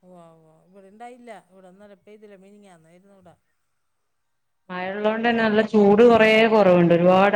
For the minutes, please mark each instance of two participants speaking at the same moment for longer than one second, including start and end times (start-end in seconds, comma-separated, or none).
none